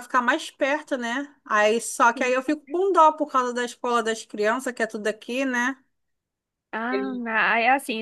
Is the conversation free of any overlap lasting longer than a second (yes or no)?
yes